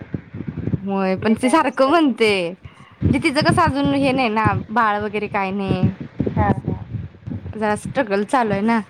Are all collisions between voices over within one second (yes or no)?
no